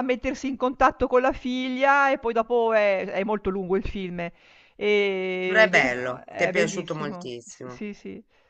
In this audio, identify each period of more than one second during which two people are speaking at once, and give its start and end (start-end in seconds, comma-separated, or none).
5.4-7.8